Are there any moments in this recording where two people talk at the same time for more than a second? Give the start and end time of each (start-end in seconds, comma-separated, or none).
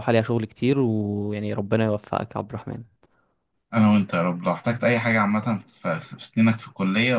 none